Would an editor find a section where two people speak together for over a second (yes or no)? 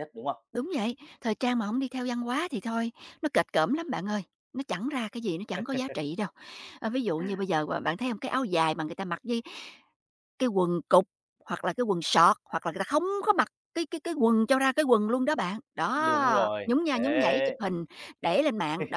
yes